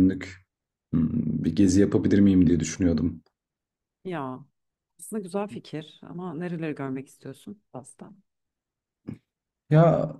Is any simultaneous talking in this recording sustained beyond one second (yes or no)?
no